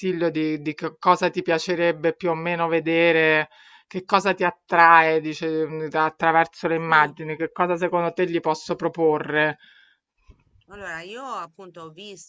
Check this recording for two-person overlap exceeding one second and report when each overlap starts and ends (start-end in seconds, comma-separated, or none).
none